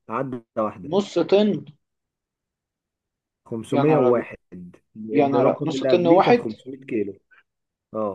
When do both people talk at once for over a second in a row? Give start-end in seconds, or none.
5.1-6.5